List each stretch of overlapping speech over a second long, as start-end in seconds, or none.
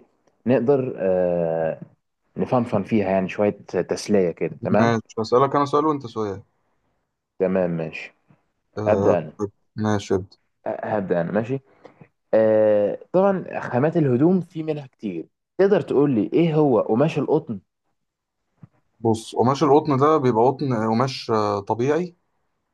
none